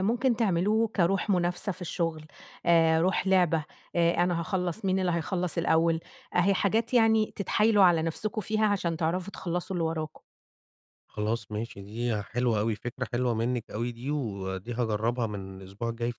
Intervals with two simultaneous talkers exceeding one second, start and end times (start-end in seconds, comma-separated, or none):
none